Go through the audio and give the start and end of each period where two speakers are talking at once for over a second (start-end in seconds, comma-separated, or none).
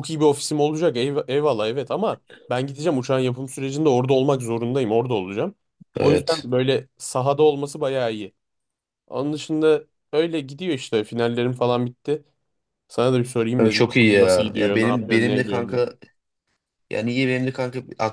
13.6-15.8